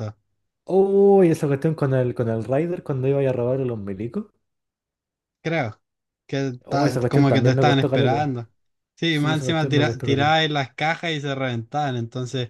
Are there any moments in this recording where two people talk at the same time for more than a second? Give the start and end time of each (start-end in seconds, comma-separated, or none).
6.7-8.3, 9.1-10.3